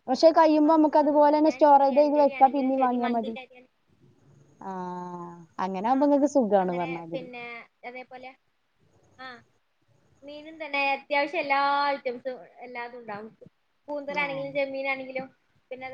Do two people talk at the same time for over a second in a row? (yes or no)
yes